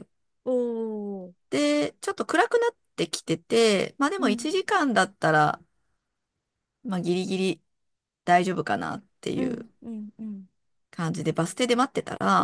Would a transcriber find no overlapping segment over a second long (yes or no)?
yes